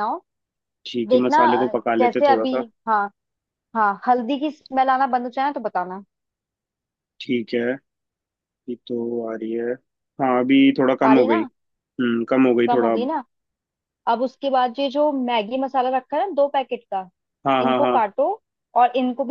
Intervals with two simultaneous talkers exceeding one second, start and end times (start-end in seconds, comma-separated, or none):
1.1-2.6